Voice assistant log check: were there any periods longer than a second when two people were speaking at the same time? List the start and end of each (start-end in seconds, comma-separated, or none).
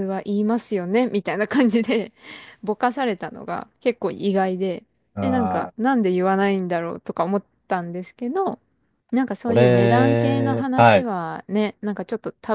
9.5-11.1